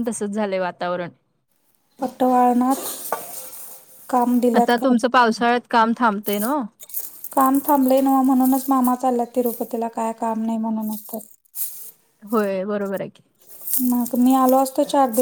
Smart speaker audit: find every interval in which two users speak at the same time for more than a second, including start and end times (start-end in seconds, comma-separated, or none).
none